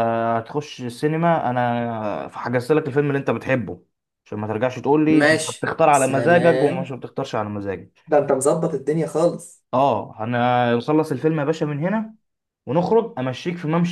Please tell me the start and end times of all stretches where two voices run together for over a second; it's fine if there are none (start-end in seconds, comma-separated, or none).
5.1-7.0